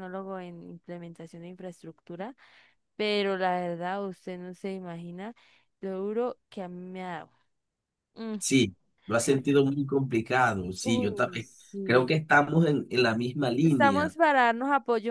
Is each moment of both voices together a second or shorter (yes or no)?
no